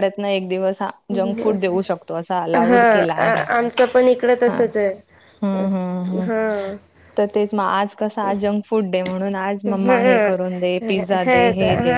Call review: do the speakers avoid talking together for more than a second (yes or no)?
yes